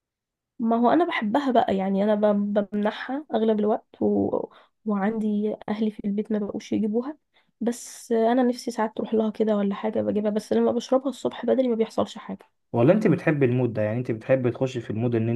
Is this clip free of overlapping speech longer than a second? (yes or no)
yes